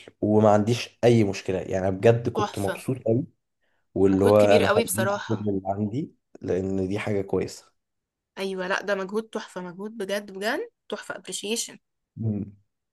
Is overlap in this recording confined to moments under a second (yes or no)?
no